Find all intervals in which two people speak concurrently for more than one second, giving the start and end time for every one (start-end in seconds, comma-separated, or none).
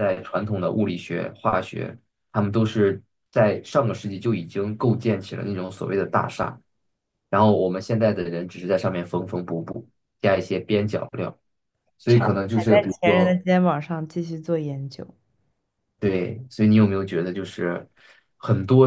12.1-13.4